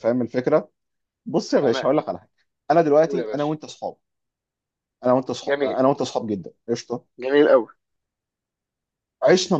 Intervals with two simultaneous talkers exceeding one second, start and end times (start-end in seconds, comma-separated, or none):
none